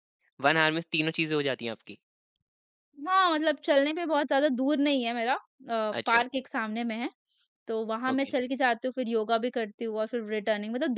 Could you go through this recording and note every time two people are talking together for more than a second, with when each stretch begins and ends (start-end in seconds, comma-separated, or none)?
none